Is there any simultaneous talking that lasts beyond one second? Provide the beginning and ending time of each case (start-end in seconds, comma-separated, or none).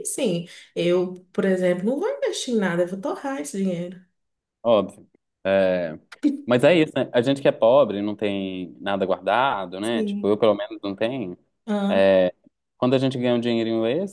none